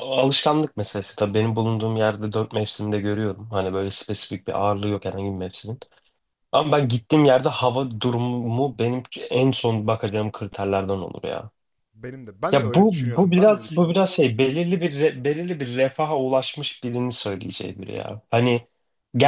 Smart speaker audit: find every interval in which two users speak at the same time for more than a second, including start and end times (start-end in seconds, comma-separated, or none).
12.5-14.2